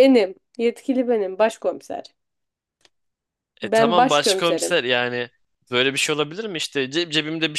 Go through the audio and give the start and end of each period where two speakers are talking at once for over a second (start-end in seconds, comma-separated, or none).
3.6-4.8